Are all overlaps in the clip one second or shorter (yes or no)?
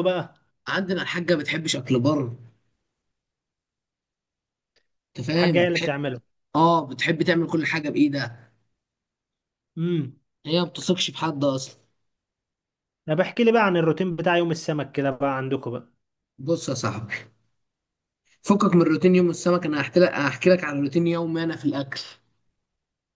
yes